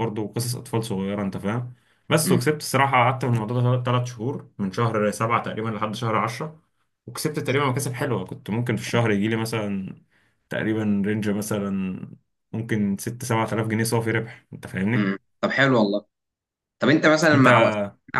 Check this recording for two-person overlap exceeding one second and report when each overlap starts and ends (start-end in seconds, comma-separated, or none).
none